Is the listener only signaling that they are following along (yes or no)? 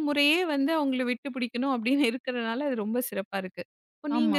yes